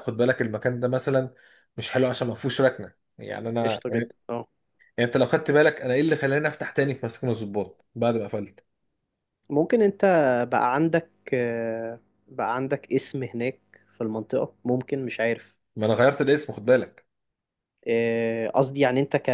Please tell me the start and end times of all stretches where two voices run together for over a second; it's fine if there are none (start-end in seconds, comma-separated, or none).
none